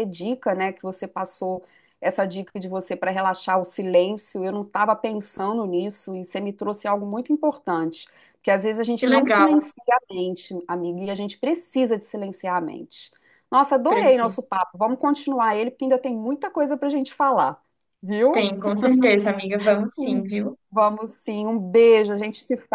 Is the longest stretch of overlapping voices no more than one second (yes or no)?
yes